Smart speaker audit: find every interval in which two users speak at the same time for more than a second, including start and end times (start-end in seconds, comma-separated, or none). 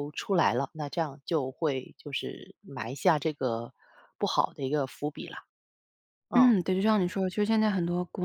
none